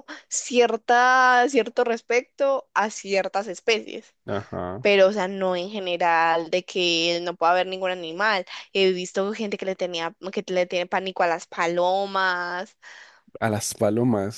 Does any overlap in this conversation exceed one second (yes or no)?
no